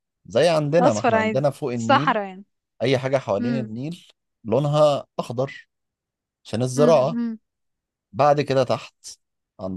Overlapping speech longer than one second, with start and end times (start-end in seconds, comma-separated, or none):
0.8-2.2